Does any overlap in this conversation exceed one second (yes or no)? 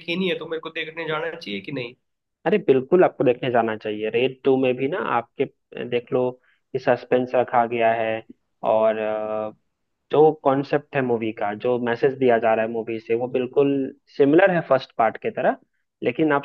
no